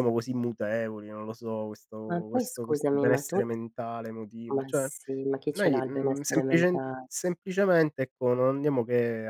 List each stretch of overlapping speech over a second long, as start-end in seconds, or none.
2.1-3.4, 5.5-7.0